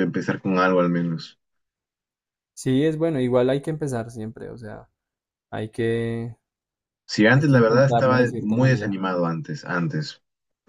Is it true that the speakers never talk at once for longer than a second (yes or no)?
no